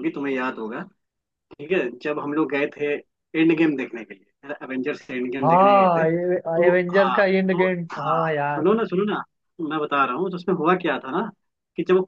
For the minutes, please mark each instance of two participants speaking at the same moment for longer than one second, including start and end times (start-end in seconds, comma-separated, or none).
5.4-8.6